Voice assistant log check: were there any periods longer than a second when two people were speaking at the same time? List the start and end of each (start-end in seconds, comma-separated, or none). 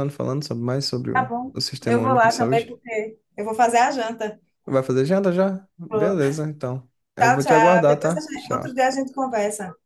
1.1-2.8, 7.2-8.7